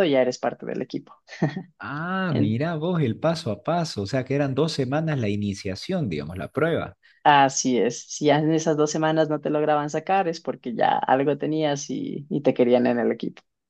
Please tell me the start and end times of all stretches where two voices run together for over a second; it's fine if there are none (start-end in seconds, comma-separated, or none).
none